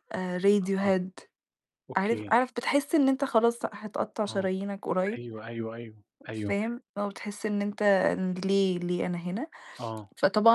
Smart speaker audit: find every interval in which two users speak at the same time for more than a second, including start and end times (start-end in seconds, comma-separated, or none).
none